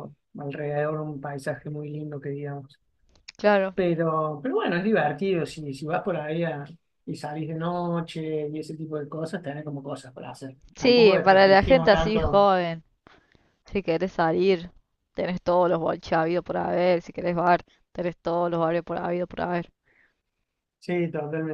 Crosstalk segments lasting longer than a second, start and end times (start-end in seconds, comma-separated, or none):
10.8-12.5